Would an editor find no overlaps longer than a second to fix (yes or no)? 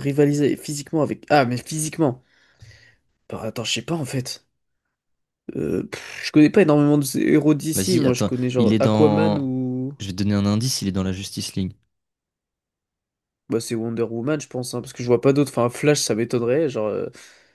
no